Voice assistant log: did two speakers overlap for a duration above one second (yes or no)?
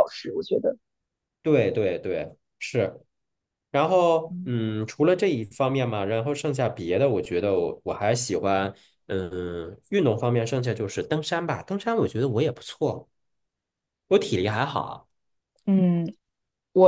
no